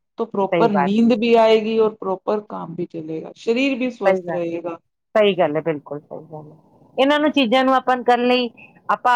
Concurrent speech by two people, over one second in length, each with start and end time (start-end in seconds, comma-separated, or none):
none